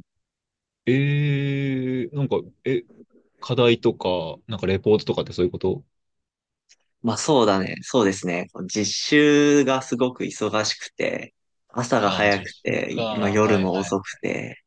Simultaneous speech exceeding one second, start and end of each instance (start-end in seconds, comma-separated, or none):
12.0-14.0